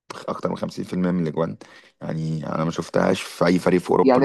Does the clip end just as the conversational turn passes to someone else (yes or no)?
yes